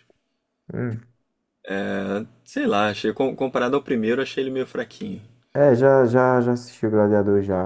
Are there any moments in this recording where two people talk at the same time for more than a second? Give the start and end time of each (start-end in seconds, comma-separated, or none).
none